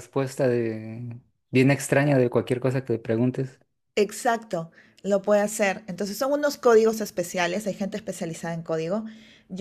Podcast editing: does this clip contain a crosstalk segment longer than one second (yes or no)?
no